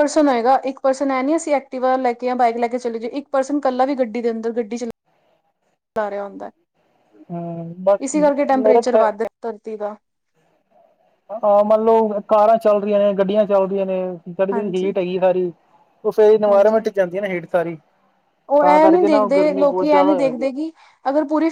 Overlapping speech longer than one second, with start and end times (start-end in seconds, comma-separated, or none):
18.6-20.5